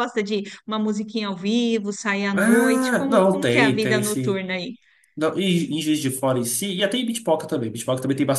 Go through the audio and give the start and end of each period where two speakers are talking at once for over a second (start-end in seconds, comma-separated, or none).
2.3-4.4